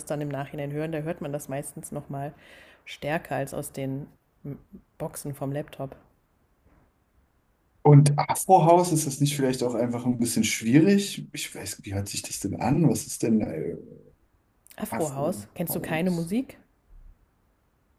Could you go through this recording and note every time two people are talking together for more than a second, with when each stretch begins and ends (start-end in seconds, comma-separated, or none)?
14.9-16.3